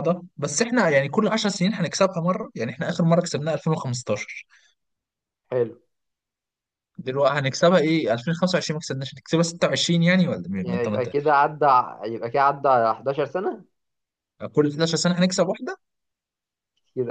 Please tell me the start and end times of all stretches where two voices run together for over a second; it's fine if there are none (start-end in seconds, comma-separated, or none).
none